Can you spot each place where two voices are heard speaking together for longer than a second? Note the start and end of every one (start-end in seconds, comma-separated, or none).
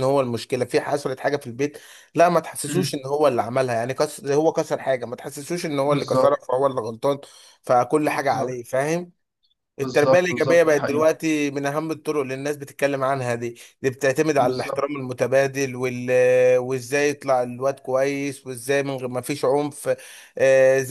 9.8-11.1